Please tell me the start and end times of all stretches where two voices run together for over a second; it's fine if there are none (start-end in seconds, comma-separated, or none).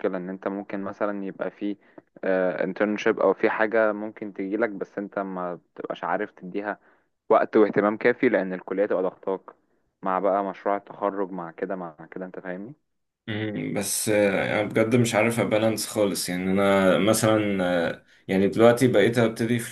none